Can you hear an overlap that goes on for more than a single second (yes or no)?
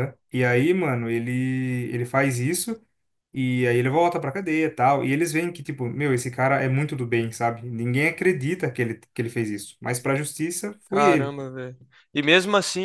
no